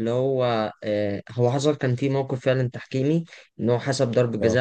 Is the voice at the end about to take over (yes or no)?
no